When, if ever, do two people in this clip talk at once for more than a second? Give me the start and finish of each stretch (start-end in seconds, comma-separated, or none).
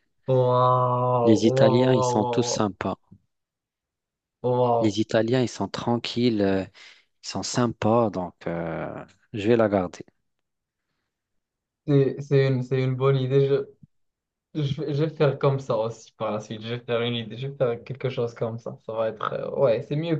1.2-2.7